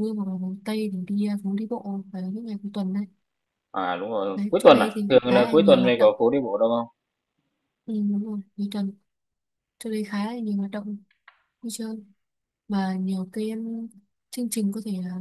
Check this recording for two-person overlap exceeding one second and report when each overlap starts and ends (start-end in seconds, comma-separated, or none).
4.3-6.1